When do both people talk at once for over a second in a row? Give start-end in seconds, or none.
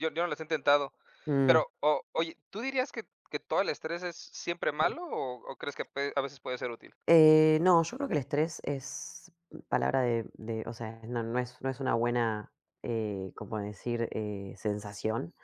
none